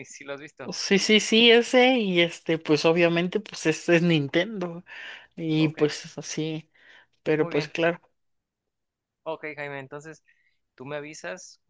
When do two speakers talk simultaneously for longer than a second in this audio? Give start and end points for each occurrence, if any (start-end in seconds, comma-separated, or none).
none